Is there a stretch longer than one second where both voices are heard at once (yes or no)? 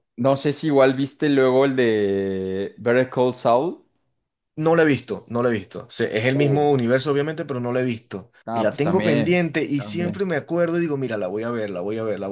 yes